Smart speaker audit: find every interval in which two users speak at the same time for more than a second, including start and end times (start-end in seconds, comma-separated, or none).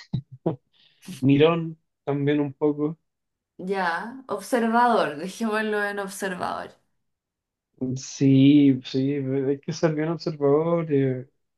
none